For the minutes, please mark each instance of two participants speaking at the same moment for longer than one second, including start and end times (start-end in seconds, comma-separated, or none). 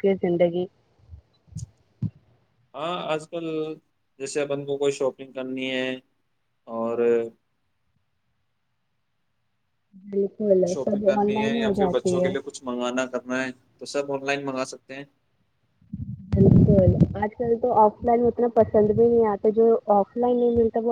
10.7-12.3